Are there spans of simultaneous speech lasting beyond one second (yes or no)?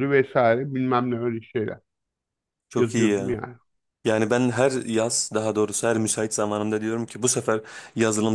no